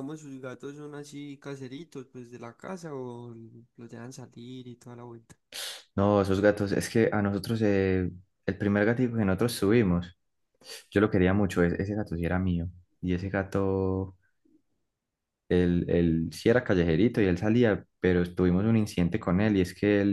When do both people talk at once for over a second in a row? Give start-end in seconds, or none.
none